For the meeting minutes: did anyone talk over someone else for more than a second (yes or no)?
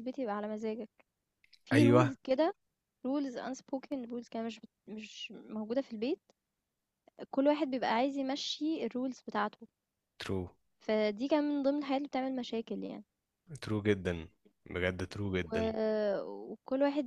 no